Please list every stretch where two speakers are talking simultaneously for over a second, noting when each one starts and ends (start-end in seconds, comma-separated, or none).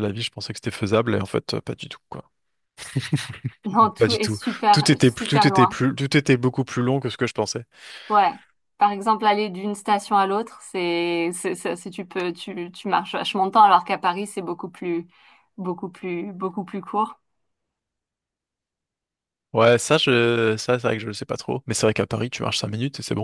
4.0-5.8